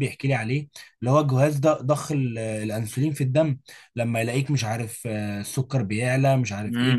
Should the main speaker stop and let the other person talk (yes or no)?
yes